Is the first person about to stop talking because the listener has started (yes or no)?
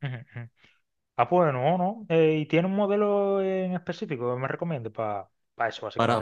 yes